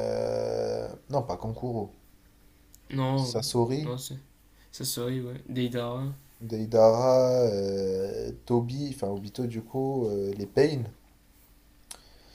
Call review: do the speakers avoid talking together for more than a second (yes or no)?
yes